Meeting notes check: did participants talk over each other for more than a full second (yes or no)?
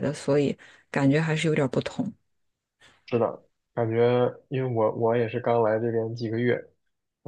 no